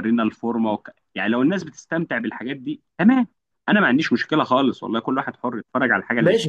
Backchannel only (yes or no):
no